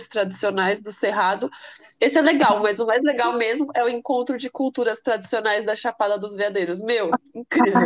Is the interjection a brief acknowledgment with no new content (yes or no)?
no